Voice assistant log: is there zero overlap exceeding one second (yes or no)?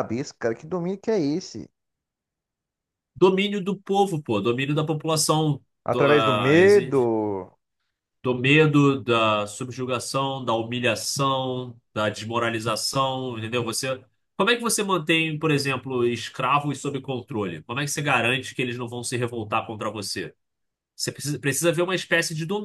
no